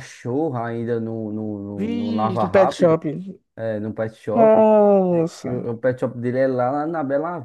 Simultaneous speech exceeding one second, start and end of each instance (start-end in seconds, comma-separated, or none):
1.8-3.0